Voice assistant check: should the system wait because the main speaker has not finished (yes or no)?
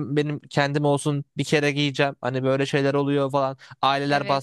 yes